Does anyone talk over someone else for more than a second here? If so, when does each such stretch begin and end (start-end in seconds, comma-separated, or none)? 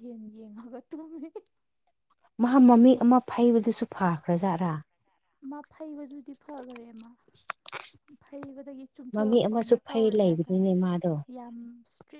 9.1-10.7